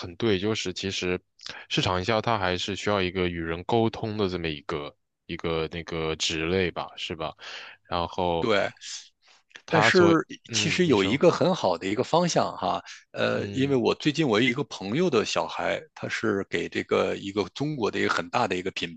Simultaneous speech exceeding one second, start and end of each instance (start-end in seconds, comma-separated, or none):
9.7-11.2